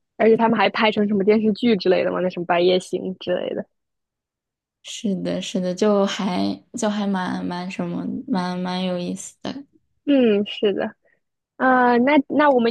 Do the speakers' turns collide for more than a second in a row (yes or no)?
no